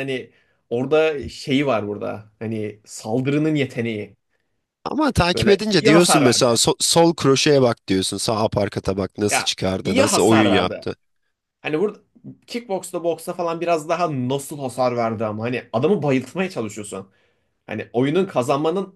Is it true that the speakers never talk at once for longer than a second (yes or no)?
no